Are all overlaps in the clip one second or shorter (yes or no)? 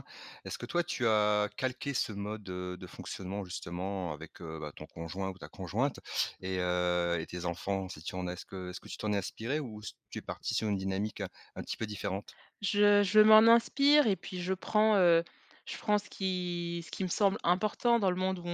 yes